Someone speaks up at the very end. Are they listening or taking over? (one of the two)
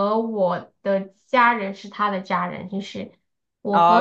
taking over